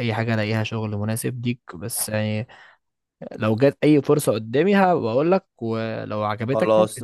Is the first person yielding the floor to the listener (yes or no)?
yes